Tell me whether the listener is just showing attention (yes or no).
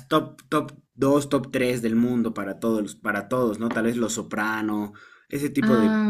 yes